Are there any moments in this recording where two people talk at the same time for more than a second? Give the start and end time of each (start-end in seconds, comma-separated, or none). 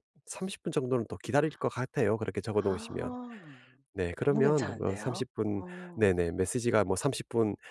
4.2-6.1